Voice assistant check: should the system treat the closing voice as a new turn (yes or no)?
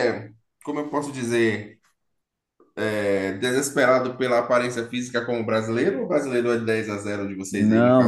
yes